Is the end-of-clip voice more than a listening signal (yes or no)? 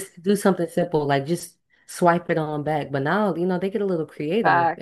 yes